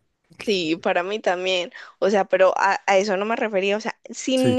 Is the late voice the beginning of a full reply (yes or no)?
no